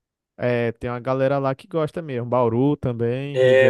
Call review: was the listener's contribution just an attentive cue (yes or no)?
no